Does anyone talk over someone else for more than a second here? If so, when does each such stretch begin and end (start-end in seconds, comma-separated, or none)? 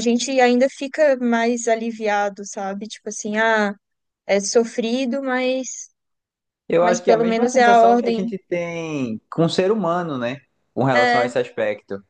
6.8-8.2